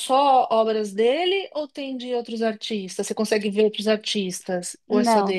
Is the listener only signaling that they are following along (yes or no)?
no